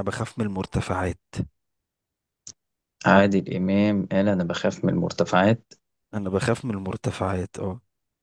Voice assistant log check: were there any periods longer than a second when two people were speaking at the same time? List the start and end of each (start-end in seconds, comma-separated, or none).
none